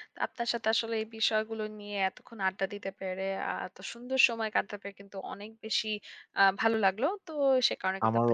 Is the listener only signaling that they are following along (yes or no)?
no